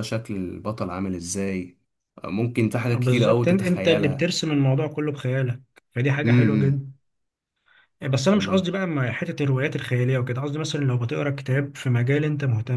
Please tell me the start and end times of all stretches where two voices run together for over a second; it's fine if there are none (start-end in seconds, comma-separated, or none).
2.9-4.3